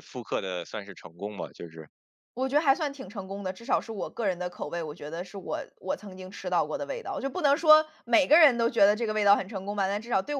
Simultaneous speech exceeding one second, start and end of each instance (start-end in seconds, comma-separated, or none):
none